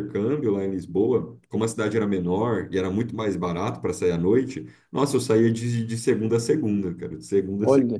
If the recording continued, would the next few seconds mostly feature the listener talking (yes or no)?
no